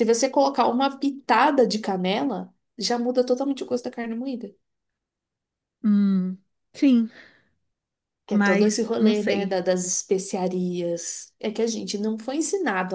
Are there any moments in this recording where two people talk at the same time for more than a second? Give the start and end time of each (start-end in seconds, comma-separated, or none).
8.3-9.6